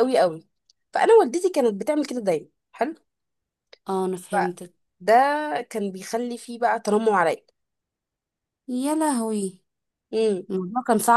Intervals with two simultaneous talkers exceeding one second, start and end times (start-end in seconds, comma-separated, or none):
none